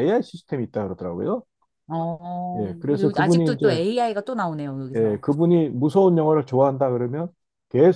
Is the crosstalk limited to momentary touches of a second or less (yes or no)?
no